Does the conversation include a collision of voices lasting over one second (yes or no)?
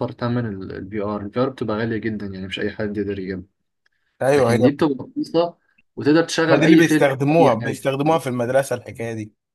yes